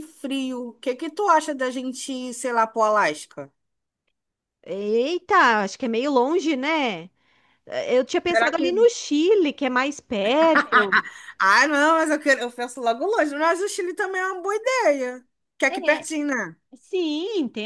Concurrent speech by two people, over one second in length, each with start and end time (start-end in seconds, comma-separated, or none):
none